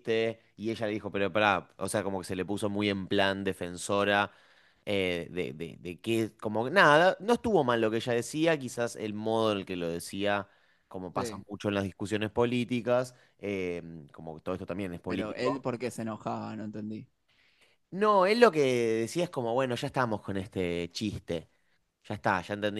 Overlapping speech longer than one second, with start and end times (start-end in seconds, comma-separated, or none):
none